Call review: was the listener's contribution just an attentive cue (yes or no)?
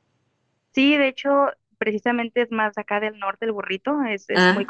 yes